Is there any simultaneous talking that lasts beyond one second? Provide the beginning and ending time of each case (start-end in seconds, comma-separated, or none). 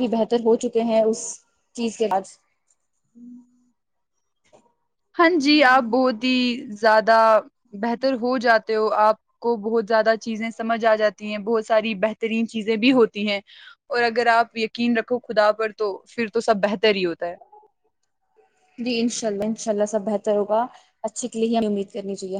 none